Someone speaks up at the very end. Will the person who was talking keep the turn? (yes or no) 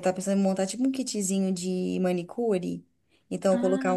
yes